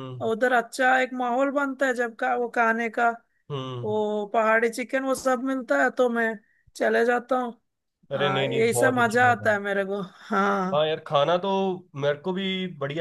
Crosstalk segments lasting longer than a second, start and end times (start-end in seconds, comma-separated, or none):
8.2-9.5